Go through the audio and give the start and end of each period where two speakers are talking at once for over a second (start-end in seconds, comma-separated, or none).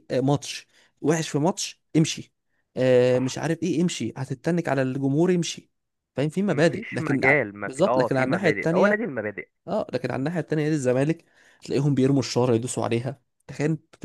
6.5-9.0